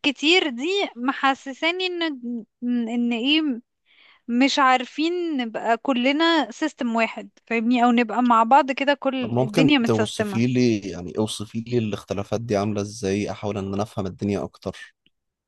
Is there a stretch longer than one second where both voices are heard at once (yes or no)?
yes